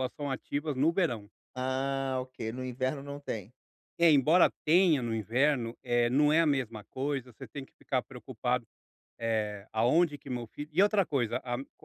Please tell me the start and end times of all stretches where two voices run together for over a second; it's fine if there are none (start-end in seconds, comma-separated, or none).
none